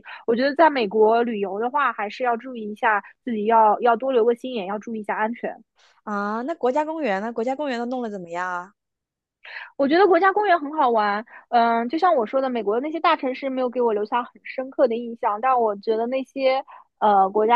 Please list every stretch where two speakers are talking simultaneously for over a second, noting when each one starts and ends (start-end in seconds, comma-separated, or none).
none